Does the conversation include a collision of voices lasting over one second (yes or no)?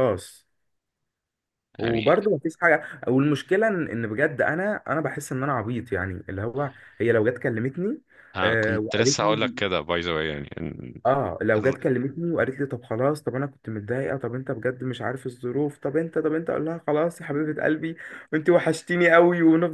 yes